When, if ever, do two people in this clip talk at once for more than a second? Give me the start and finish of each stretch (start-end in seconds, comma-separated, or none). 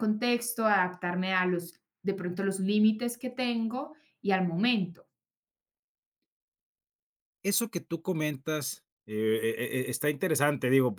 none